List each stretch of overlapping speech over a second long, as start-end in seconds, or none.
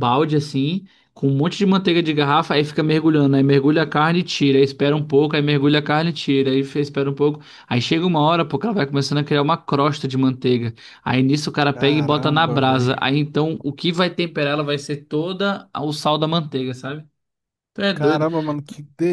11.7-13.1